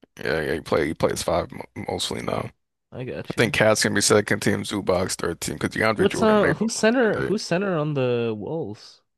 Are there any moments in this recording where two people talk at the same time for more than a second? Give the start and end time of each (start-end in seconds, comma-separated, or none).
6.0-7.4